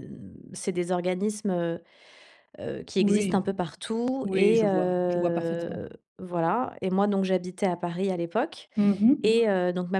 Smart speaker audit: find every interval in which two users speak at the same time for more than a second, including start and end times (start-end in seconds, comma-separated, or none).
4.2-5.8